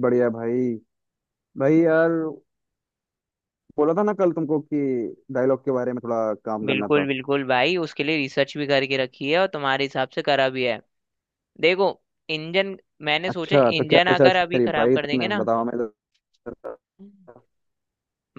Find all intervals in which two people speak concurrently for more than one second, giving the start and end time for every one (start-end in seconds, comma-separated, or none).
13.3-15.5